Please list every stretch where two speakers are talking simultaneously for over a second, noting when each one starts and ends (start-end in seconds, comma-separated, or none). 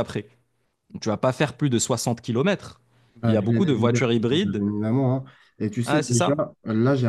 3.2-4.6